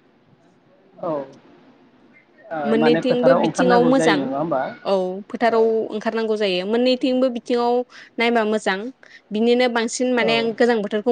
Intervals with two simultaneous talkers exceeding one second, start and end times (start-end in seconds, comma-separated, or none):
2.8-4.2